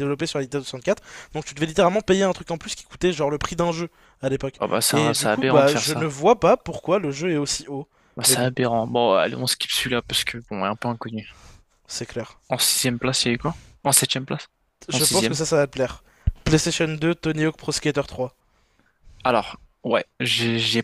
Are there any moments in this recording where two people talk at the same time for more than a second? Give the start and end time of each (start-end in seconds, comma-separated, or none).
4.6-6.0